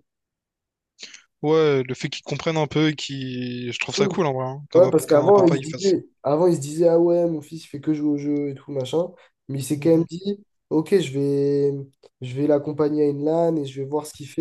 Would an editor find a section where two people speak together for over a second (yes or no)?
yes